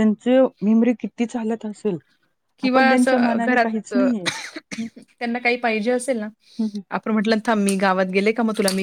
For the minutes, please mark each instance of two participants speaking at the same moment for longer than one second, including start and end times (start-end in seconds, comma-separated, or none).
2.6-4.1